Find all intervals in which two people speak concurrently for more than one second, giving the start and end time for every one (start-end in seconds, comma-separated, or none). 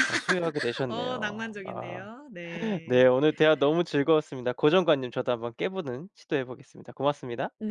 0.9-2.1